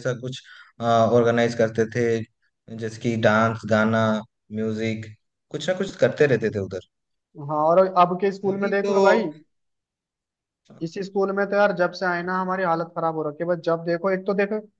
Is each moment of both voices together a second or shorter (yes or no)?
yes